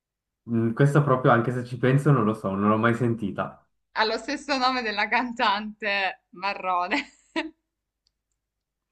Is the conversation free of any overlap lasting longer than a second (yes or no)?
yes